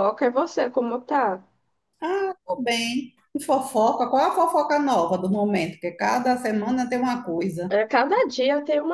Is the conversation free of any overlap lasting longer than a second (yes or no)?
yes